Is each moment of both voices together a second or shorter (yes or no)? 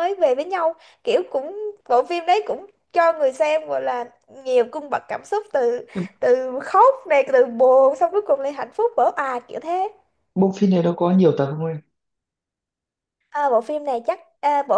yes